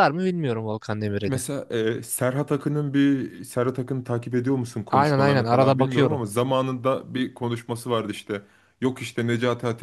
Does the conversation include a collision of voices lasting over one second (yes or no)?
yes